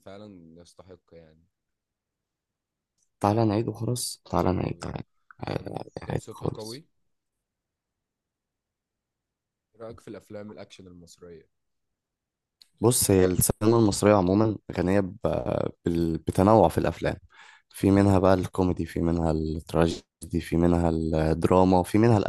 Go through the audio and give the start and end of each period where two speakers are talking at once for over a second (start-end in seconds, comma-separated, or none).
5.5-6.8